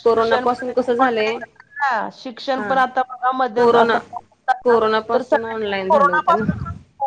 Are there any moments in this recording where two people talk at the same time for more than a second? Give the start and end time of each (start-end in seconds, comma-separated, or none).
5.1-6.5